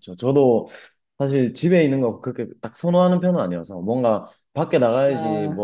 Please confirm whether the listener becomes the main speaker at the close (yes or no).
no